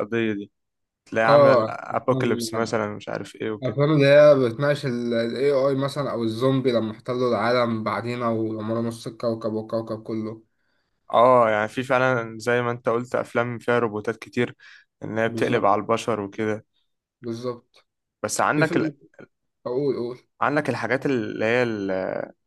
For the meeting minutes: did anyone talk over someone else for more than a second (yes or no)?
yes